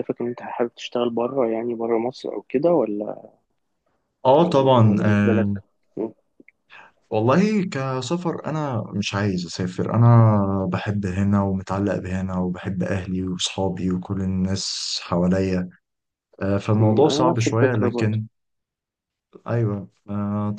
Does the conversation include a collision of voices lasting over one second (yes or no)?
yes